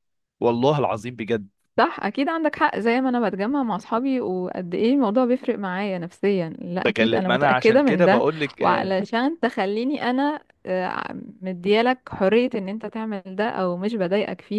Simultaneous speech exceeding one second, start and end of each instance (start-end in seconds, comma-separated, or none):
6.8-9.0